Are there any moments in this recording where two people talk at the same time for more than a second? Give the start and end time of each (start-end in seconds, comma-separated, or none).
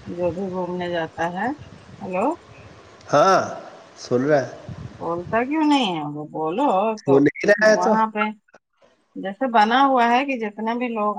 none